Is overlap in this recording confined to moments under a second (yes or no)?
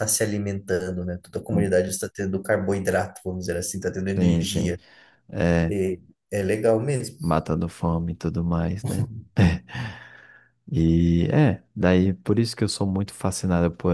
yes